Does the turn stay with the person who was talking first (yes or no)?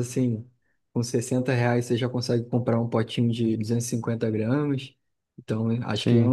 yes